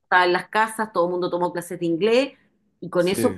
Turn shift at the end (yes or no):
no